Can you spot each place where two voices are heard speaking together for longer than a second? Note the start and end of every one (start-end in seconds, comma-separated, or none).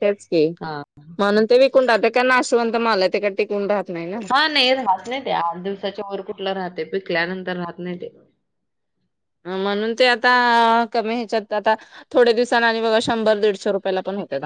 none